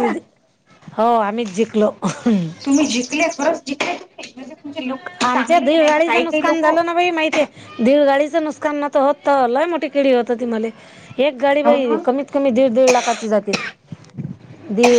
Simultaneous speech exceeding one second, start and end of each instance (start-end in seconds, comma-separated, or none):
5.2-6.8